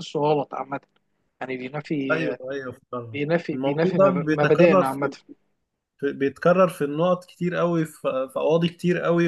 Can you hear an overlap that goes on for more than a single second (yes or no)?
yes